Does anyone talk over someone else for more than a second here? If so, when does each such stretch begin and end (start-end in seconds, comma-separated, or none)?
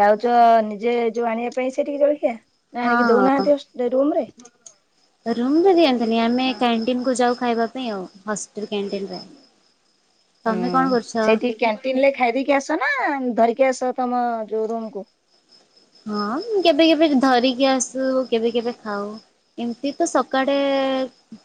none